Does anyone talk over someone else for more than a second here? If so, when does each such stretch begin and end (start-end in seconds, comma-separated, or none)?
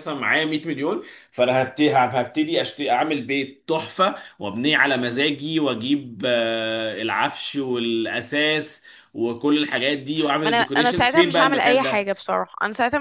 10.4-12.1